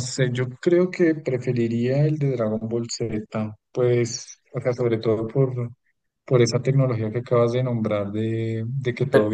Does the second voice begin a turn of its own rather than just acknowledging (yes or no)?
no